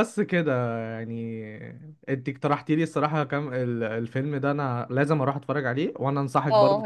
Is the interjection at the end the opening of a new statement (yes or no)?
yes